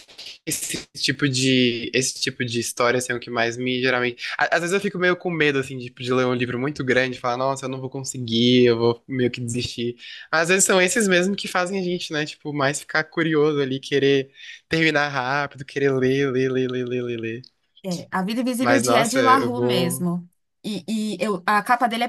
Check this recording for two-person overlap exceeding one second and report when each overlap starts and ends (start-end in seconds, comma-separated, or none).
18.6-20.1